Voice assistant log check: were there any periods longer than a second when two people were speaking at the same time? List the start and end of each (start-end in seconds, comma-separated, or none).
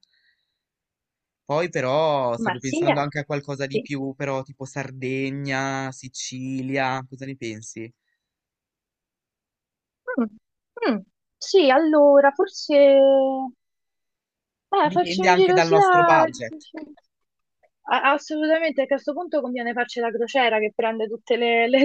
14.9-16.7